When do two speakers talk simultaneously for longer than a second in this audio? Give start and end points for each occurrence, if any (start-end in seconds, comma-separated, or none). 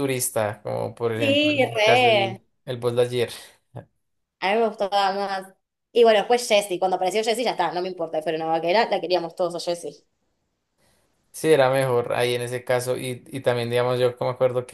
1.2-2.4